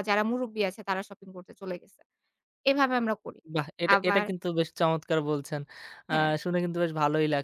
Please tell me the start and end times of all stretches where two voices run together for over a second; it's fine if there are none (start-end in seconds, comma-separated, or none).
none